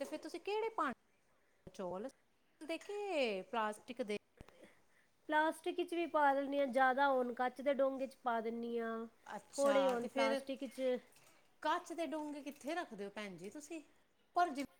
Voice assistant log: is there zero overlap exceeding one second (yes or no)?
yes